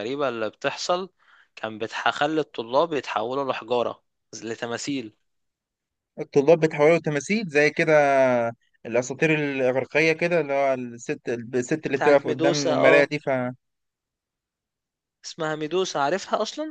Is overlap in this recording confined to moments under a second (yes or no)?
no